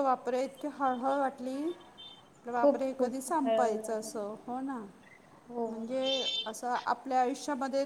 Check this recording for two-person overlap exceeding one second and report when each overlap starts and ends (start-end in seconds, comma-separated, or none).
2.6-4.2